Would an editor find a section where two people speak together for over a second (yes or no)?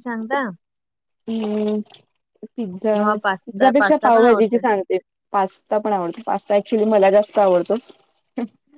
yes